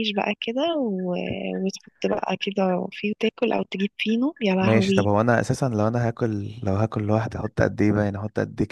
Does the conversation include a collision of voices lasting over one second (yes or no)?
no